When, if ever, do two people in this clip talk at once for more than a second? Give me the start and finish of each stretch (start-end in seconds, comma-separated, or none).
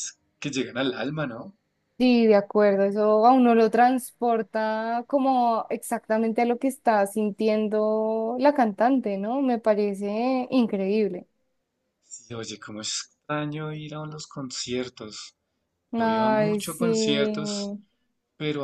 15.9-17.6